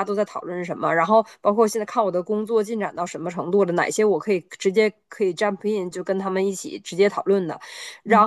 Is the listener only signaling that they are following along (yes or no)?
yes